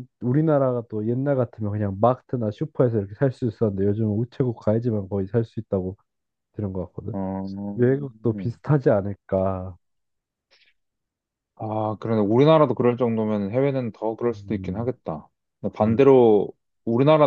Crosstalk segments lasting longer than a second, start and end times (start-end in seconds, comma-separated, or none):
none